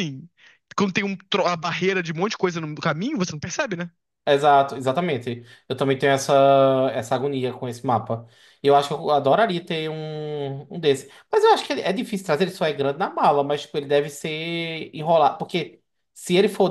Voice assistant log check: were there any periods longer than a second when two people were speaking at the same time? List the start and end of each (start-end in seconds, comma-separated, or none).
none